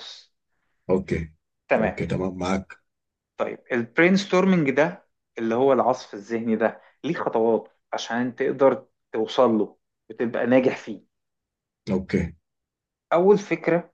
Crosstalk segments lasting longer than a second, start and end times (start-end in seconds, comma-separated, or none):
none